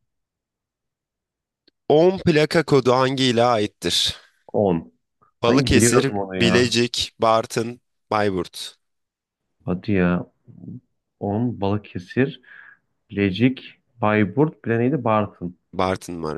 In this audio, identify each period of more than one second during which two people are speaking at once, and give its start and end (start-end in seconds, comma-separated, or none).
5.5-6.8